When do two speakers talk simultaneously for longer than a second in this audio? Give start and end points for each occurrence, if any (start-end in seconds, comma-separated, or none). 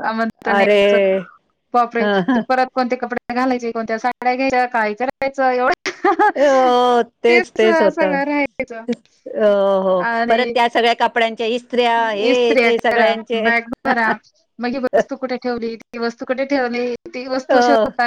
7.6-8.8